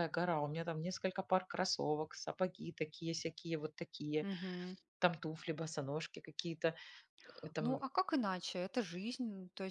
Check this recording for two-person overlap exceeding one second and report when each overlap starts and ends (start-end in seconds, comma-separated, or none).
none